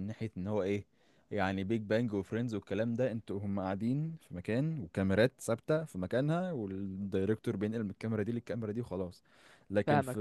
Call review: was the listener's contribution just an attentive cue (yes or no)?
yes